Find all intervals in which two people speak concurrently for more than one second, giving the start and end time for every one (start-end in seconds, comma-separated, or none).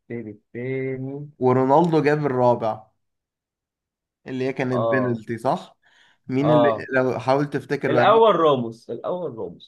none